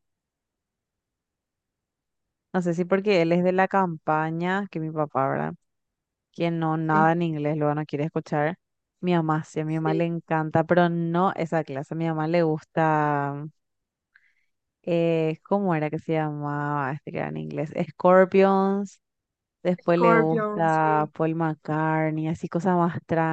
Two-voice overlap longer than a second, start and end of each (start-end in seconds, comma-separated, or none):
19.8-21.1